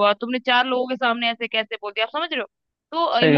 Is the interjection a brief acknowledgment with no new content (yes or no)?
yes